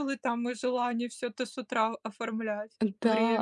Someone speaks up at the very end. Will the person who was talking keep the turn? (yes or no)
no